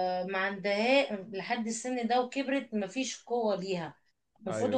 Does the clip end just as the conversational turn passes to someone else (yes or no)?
no